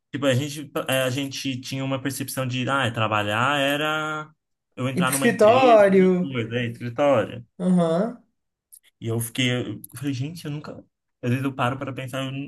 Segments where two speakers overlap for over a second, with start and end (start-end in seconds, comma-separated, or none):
5.0-6.3